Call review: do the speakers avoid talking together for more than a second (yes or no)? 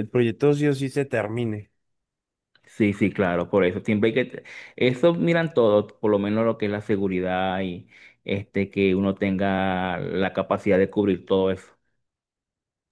yes